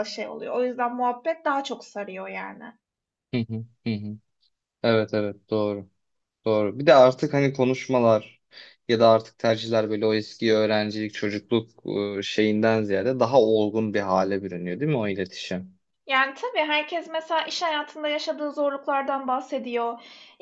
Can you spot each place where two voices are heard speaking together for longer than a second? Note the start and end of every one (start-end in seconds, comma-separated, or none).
none